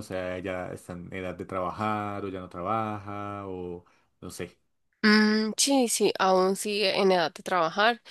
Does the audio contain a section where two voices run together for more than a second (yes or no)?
no